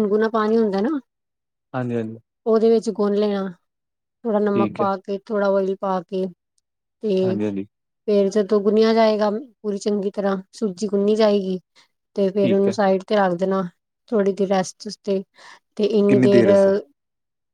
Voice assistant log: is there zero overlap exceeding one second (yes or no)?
yes